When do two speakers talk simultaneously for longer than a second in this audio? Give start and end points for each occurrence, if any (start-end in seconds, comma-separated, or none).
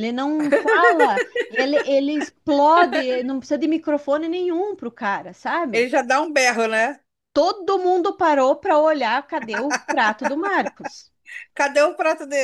none